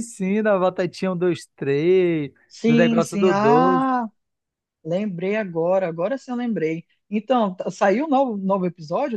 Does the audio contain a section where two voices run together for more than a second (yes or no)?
yes